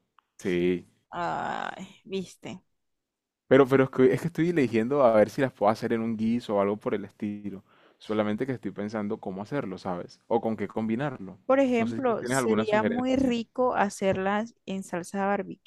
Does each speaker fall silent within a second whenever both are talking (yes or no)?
no